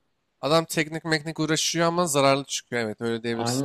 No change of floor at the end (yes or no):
no